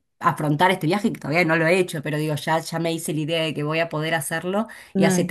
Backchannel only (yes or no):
yes